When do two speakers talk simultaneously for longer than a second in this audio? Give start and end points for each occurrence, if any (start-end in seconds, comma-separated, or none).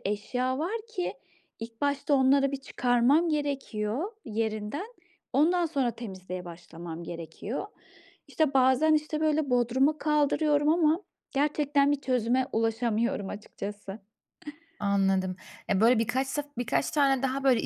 none